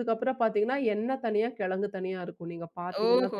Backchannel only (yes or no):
no